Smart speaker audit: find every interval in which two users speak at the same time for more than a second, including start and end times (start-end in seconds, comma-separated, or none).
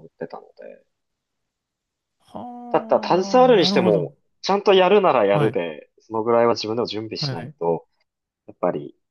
2.7-4.1